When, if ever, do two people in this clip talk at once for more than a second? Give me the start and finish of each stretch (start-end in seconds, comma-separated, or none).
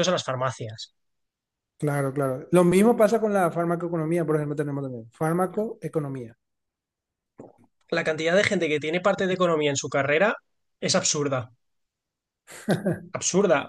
none